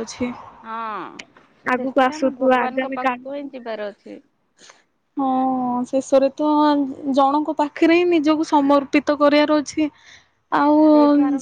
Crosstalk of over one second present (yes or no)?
yes